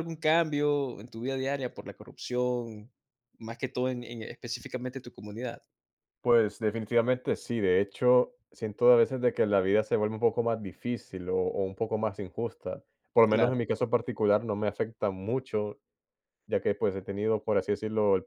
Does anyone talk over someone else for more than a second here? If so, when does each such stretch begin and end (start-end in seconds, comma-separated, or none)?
none